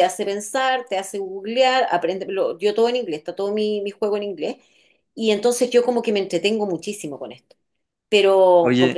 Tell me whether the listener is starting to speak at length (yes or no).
no